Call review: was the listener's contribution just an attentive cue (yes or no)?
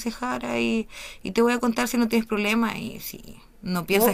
no